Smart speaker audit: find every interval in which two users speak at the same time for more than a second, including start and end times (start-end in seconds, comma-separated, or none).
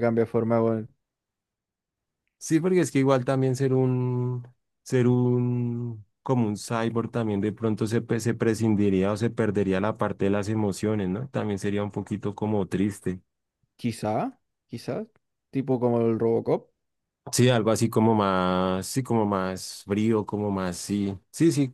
none